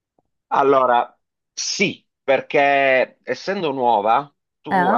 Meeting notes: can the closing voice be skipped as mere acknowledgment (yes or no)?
yes